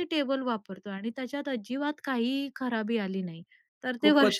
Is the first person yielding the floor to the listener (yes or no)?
yes